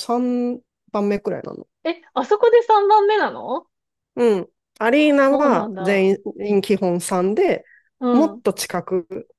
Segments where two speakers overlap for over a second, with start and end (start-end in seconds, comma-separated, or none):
5.0-6.2